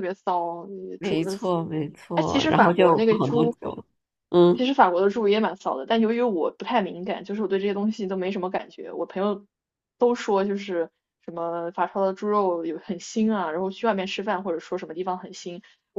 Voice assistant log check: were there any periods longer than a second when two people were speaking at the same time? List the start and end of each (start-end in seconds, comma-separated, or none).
2.1-3.5